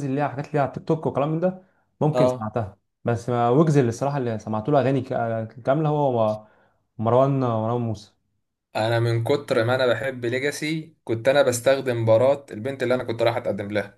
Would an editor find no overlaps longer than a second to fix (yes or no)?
yes